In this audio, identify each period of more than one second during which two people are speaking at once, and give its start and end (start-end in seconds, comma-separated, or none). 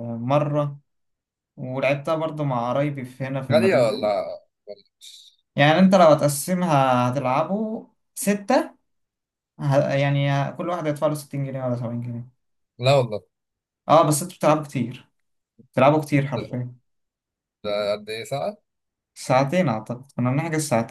none